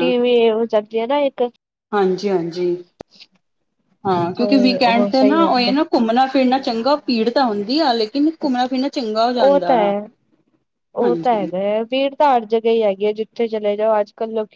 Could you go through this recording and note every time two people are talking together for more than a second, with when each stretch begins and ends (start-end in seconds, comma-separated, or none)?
4.4-5.7